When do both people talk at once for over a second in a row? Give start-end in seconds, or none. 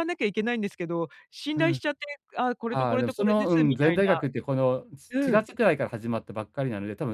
2.7-4.2